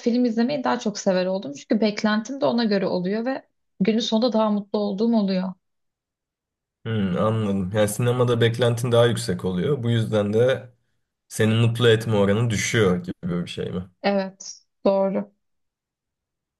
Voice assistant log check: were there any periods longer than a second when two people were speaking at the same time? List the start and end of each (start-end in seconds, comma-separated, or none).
none